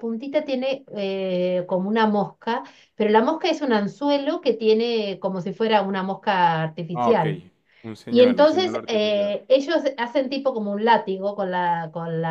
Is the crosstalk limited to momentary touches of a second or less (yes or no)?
no